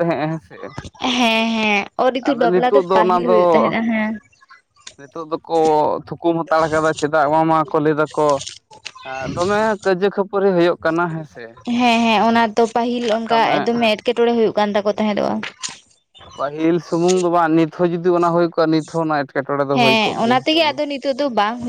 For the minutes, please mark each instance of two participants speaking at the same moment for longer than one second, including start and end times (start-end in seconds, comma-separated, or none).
2.2-3.7